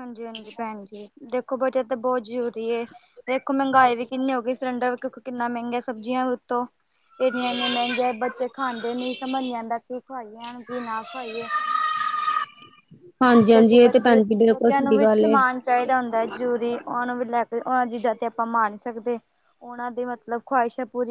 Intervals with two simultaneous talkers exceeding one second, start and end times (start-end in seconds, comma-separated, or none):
13.5-15.3